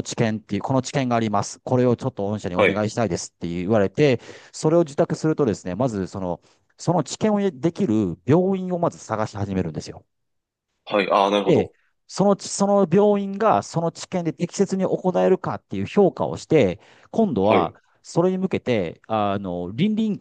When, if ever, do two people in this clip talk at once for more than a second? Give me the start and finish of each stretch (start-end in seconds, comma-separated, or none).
none